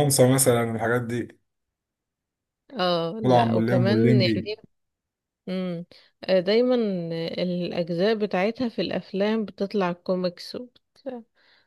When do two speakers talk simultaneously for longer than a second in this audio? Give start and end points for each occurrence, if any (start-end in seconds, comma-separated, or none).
3.2-4.5